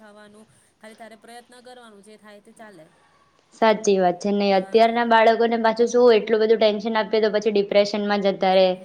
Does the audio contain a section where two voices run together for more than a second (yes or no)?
no